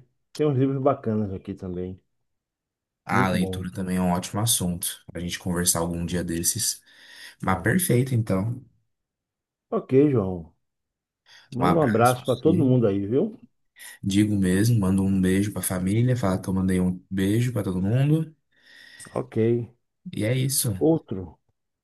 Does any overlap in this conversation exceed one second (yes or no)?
yes